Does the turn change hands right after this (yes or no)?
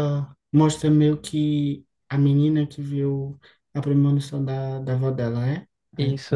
yes